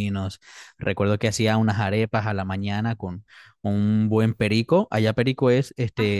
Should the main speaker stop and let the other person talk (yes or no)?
no